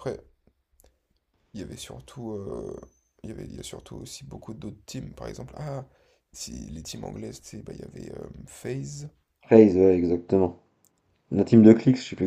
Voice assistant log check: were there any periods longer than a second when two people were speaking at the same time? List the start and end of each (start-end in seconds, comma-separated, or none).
none